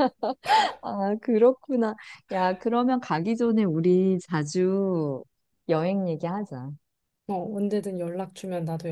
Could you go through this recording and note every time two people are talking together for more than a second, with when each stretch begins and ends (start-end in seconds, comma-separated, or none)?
none